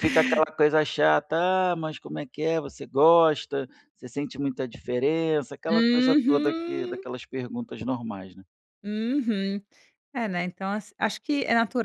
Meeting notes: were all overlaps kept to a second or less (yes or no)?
no